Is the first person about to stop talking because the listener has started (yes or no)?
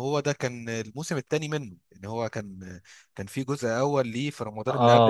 yes